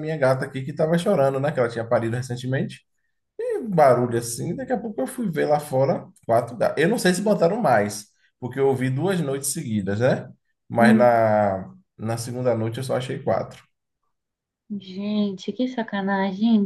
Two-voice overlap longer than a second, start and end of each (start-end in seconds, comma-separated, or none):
none